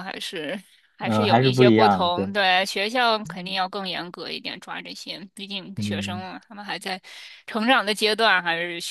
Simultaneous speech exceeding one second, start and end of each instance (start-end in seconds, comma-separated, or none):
1.0-2.3